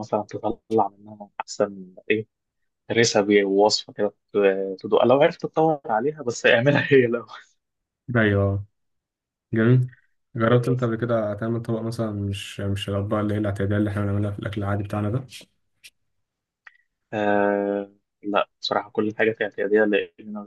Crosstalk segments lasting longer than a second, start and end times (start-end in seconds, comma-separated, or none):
none